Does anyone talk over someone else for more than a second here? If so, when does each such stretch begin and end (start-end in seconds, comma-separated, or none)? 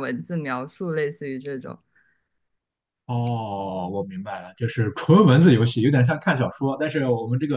none